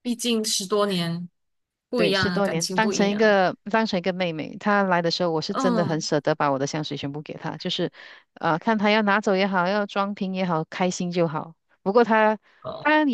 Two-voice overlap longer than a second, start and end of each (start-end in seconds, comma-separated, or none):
1.9-3.4